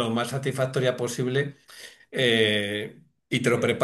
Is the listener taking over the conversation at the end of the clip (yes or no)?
no